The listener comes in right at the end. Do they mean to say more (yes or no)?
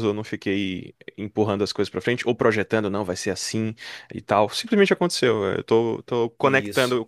no